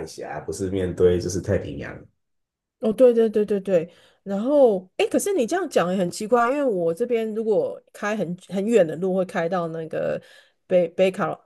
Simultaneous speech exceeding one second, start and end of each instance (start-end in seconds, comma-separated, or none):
none